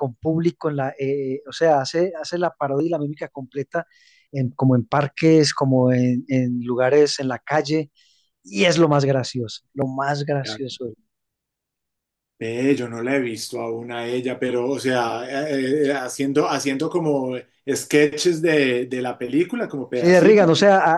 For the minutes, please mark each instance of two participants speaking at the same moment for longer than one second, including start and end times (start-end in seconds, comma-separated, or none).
none